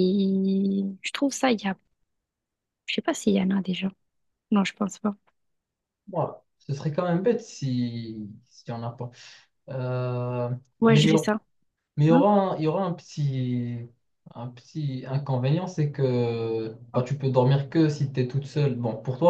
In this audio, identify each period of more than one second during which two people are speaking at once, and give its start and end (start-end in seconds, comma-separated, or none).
none